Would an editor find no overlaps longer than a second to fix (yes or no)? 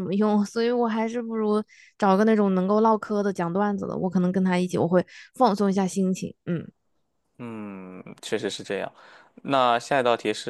yes